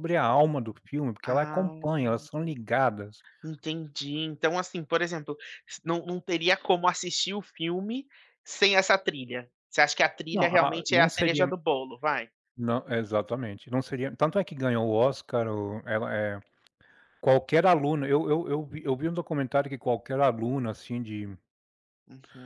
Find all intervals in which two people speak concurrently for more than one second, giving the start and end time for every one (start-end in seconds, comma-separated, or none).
10.3-11.5